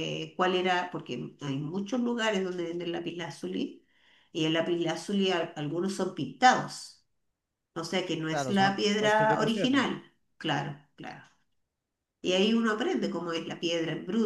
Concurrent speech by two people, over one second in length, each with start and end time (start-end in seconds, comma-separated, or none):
8.3-9.9